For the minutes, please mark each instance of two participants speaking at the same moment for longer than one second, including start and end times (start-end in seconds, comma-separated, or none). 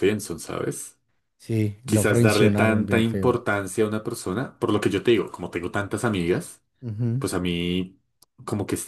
1.9-3.4